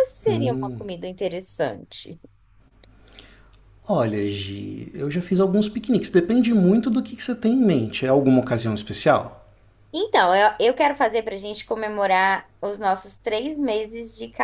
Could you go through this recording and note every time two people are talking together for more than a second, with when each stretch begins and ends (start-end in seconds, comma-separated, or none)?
none